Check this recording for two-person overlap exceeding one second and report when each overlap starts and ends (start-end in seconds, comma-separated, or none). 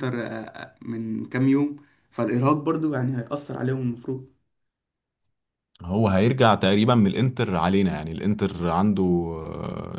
none